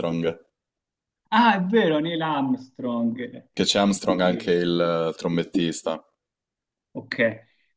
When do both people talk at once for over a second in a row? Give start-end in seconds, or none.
none